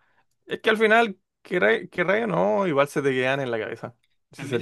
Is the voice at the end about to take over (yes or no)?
yes